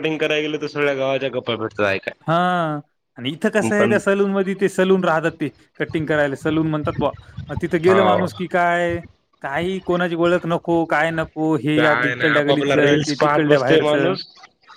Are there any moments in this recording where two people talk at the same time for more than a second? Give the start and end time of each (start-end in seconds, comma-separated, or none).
11.8-13.9